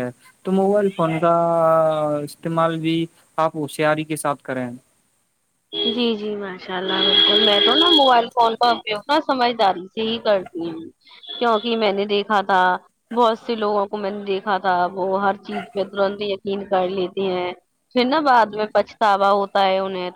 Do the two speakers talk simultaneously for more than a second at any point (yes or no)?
no